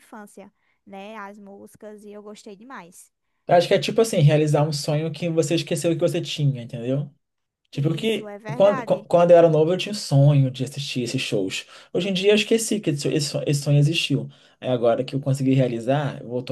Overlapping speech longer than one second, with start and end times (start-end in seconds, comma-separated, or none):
7.7-9.1